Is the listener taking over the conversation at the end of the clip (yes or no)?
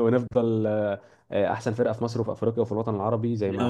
yes